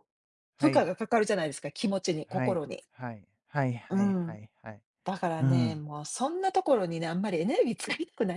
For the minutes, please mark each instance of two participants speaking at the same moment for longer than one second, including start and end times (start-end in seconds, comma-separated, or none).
none